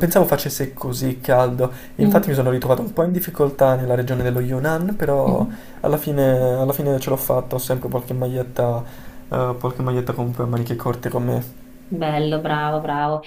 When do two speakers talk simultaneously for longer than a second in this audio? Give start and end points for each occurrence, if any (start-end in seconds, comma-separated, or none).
none